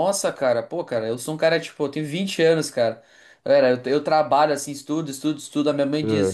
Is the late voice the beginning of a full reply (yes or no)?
no